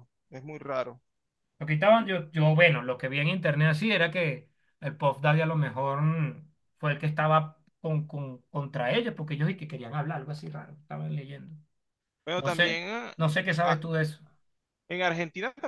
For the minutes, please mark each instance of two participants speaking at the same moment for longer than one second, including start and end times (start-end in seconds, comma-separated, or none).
none